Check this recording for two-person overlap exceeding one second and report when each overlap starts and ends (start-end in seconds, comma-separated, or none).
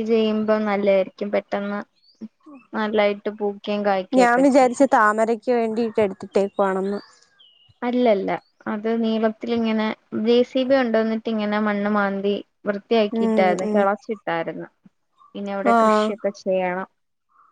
none